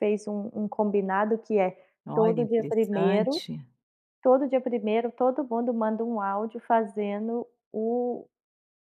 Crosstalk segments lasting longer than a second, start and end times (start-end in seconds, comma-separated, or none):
2.1-3.4